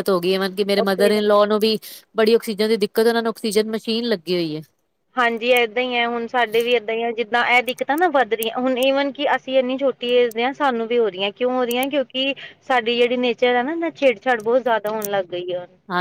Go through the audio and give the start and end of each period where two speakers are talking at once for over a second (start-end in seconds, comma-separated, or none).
none